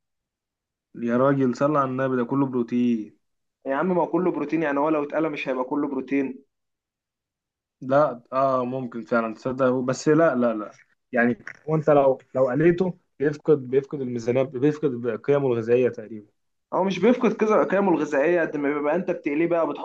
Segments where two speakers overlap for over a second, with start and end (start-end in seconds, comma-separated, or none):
none